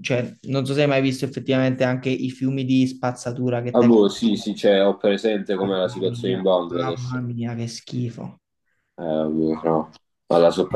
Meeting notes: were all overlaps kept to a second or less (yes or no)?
no